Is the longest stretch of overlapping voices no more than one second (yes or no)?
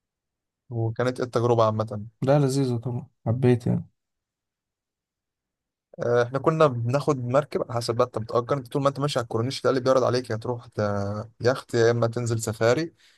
yes